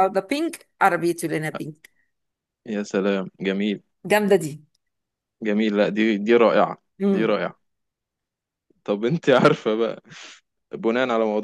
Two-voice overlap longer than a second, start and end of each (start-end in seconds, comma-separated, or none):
none